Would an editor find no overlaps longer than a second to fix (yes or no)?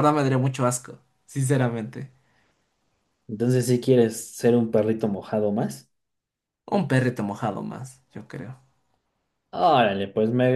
yes